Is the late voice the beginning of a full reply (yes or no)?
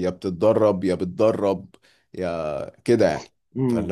yes